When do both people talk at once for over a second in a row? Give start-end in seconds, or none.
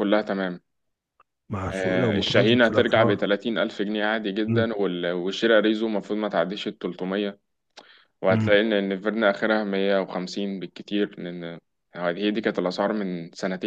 1.7-3.2